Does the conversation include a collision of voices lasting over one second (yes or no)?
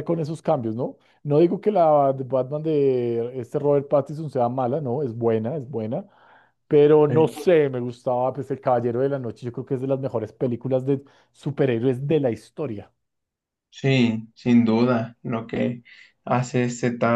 no